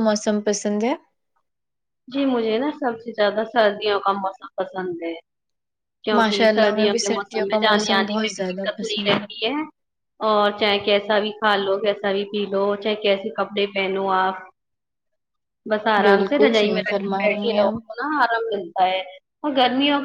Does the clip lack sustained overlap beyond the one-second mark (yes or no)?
no